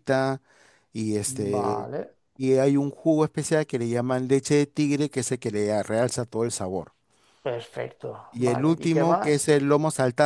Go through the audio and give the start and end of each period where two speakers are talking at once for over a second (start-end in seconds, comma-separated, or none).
8.3-9.6